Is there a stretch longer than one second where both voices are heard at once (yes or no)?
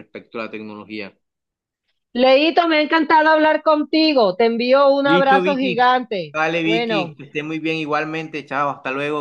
yes